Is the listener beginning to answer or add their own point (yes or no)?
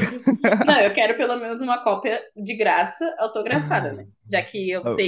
no